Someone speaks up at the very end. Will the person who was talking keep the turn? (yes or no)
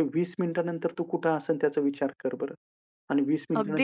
no